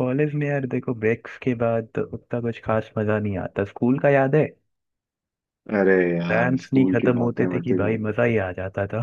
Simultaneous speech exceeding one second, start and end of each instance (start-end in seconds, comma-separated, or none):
6.3-8.0